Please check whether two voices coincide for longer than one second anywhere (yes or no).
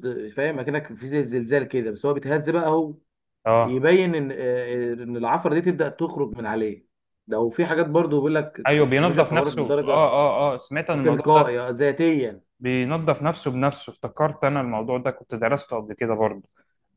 yes